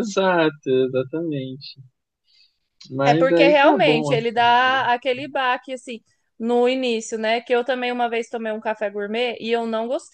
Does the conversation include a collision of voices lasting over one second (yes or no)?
yes